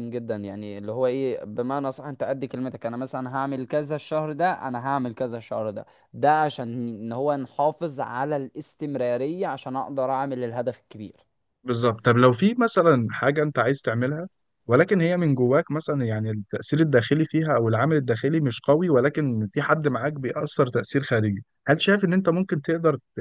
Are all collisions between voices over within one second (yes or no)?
yes